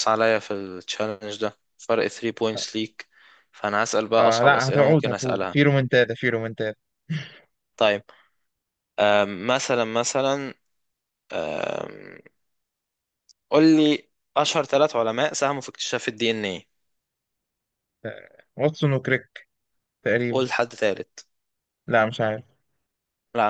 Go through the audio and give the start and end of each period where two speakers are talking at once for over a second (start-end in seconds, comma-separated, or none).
4.2-5.6